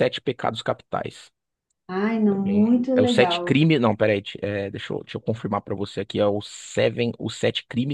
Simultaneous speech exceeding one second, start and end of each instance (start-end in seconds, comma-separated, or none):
2.3-3.6